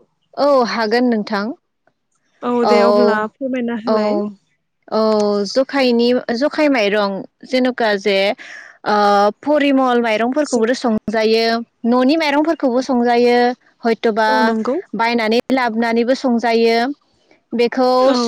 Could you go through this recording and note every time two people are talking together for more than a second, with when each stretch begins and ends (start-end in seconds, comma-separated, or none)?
none